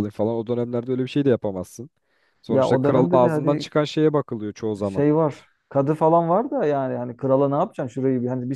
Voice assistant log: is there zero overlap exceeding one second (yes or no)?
no